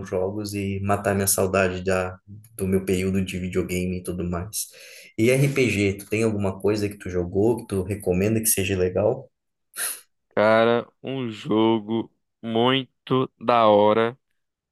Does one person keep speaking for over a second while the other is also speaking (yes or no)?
no